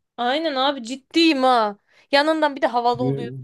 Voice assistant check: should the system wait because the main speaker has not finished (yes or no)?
yes